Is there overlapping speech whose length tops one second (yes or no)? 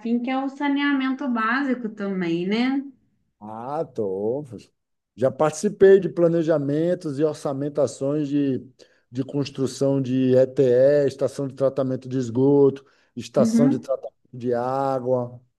no